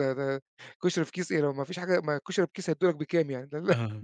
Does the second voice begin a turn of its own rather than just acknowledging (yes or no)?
no